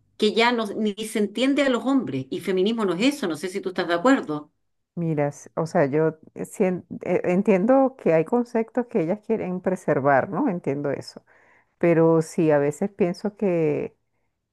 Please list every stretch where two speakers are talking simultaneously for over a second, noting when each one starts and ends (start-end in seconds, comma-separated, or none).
none